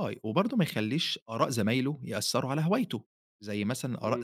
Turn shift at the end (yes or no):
yes